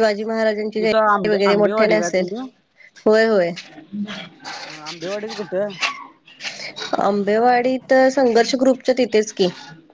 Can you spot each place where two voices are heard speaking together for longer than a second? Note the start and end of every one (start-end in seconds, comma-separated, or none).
0.8-2.3